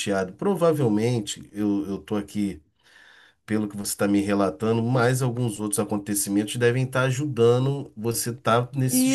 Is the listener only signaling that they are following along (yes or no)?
no